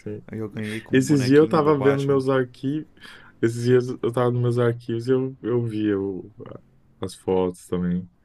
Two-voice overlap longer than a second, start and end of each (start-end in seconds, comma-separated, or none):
0.9-2.2